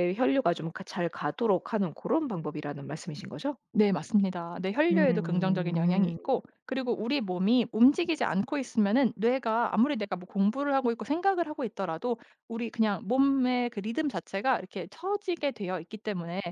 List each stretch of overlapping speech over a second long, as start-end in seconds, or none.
4.9-6.2